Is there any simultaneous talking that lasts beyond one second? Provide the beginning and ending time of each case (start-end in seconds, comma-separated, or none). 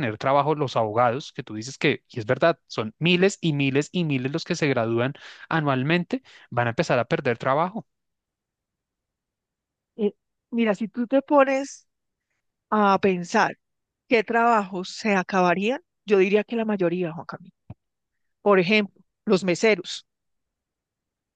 none